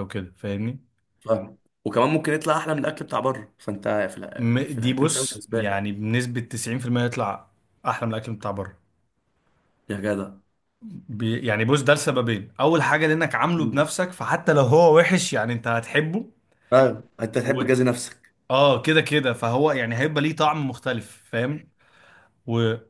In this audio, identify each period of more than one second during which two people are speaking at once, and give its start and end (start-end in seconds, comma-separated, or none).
4.4-5.8